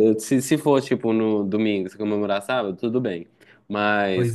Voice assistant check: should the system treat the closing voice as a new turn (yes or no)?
no